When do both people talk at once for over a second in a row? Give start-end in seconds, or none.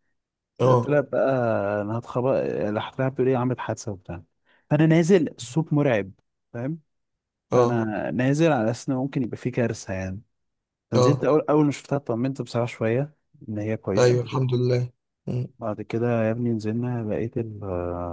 none